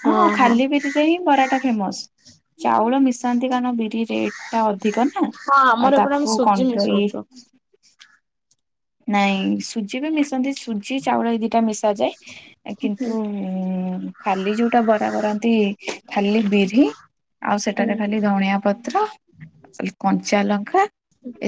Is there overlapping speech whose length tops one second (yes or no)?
yes